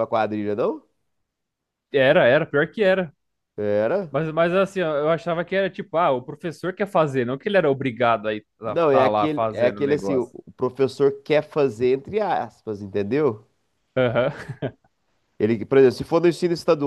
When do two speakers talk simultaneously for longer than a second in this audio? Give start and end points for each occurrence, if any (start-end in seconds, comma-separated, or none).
8.6-10.3